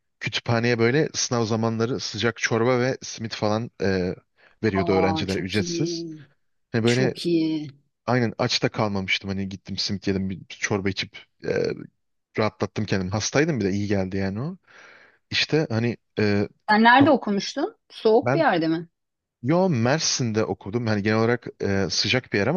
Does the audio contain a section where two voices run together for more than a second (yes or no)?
yes